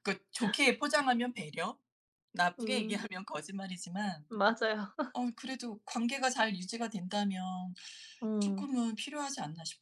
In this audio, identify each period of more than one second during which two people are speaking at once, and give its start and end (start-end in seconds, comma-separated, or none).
none